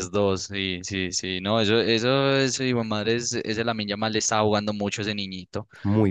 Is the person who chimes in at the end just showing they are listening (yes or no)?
yes